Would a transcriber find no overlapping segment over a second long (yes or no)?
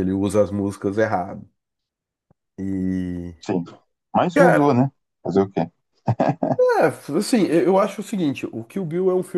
yes